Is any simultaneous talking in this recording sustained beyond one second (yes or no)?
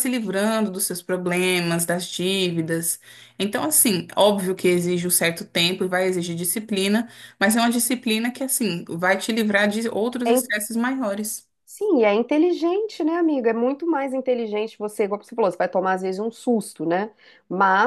no